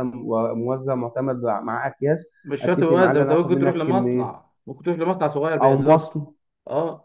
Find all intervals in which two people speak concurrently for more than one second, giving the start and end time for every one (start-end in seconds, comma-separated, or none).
2.6-4.5